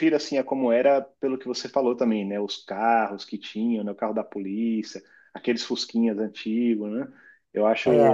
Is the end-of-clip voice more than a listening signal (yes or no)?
no